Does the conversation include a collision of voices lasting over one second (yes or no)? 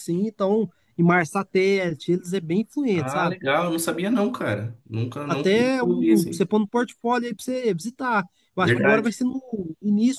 yes